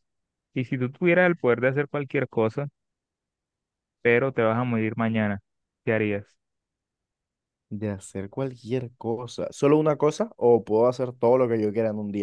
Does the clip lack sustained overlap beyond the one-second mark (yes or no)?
yes